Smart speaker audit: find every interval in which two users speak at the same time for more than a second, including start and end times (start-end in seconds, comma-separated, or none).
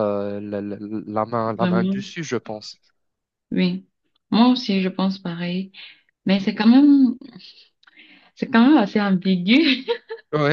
none